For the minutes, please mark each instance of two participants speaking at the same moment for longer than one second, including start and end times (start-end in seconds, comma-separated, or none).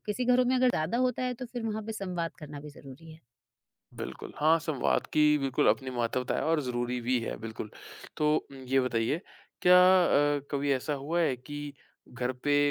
none